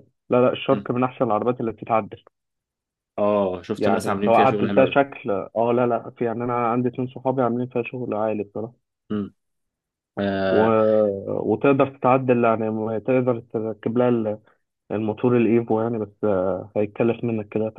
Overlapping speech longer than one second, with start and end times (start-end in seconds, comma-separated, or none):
3.8-5.0